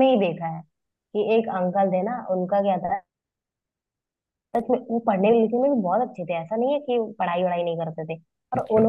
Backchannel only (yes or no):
yes